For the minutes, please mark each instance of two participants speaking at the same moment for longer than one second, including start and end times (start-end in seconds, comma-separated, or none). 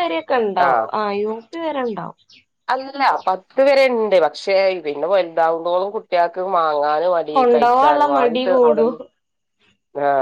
7.4-8.9